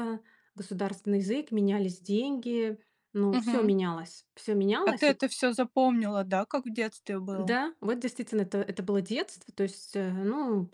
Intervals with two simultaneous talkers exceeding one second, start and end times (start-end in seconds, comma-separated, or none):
none